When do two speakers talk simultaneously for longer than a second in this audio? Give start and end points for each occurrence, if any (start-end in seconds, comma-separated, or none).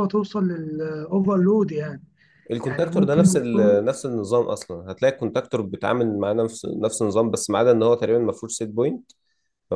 2.6-3.9